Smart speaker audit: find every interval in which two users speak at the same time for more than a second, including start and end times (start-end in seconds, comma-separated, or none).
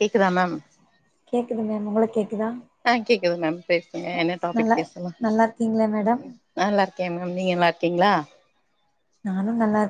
none